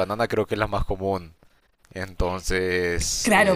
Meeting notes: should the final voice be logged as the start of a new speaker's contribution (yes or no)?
yes